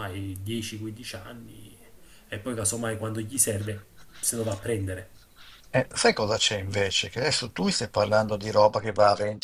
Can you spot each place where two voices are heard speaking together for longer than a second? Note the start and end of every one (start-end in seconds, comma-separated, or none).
none